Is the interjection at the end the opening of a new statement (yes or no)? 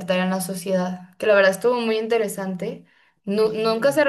no